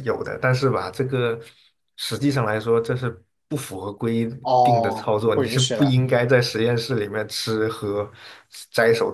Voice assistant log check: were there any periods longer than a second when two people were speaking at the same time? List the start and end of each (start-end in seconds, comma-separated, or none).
4.4-6.0